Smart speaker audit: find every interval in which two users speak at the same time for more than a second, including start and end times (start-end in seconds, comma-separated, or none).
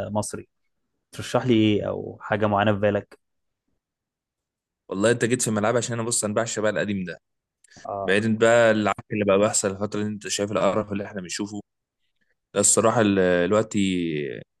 none